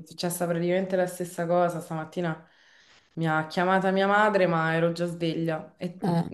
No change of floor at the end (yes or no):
yes